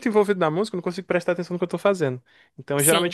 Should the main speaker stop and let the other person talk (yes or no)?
no